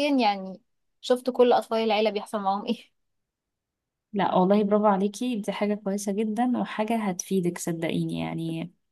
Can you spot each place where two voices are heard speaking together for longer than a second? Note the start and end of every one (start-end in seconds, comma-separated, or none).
none